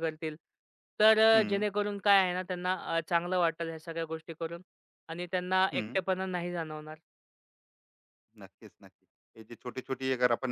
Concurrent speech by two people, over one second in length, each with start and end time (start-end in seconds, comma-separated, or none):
none